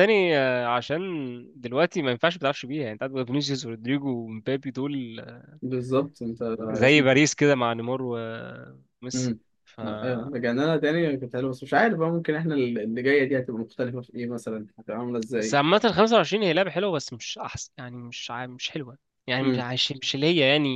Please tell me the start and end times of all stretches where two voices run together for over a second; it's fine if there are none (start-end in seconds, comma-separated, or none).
none